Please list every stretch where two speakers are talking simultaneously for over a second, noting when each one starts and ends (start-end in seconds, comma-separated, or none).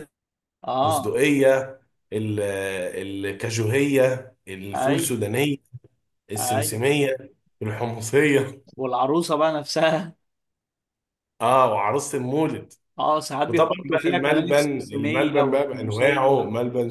13.5-16.4